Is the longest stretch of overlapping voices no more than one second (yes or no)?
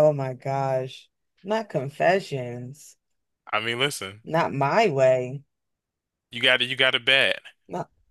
yes